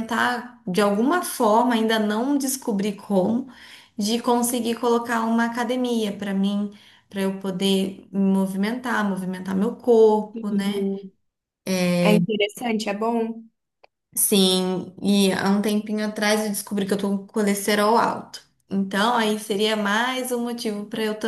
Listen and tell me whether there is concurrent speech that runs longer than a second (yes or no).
no